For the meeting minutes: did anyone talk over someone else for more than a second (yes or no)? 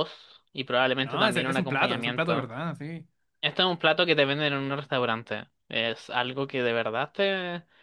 yes